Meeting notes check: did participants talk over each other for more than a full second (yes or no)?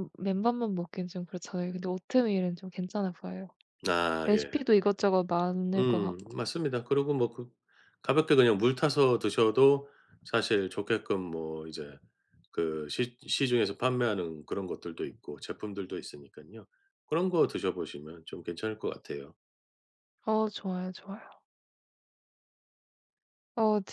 no